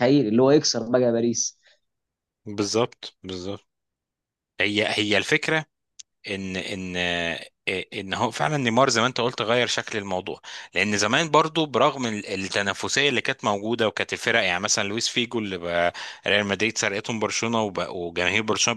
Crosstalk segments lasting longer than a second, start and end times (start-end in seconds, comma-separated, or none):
none